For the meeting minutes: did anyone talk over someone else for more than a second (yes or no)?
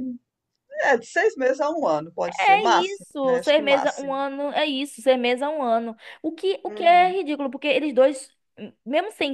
yes